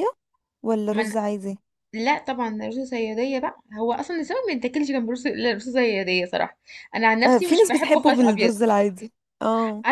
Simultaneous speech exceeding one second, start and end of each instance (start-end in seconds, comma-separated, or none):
7.2-8.5